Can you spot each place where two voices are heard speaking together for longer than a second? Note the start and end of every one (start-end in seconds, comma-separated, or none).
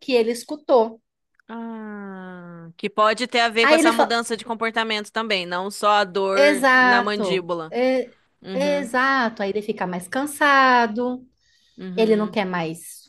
6.3-7.7